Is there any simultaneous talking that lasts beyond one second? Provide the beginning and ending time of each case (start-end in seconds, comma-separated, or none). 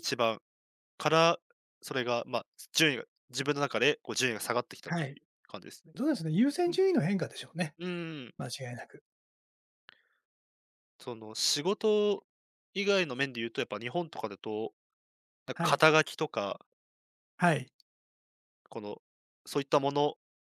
none